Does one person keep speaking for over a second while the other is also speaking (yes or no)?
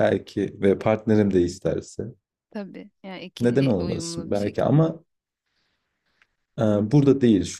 yes